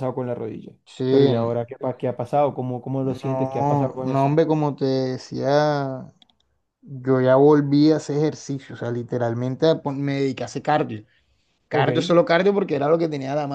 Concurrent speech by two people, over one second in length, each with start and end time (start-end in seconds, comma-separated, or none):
3.0-4.3